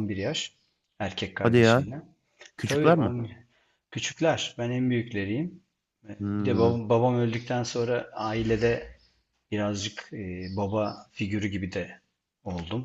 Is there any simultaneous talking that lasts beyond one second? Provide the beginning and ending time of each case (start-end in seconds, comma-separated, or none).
none